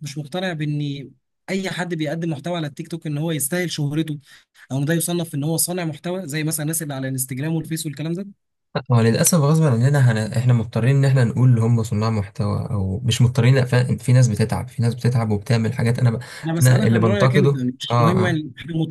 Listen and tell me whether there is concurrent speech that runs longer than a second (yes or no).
yes